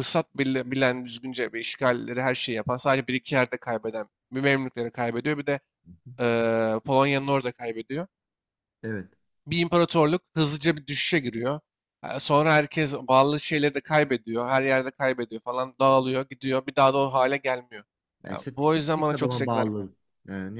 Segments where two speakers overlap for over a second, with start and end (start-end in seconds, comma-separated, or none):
18.3-19.9